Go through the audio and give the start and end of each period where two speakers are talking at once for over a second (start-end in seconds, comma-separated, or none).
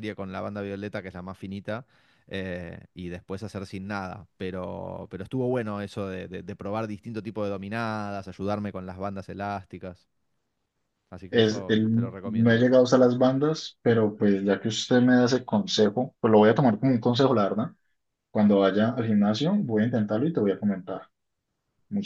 11.3-12.7